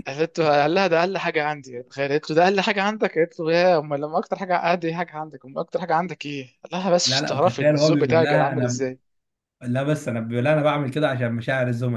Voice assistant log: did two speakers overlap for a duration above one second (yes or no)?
yes